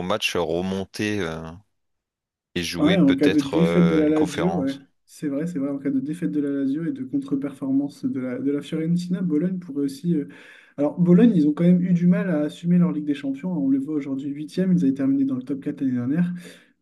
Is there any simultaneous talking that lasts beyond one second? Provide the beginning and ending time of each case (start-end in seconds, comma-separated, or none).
2.8-4.8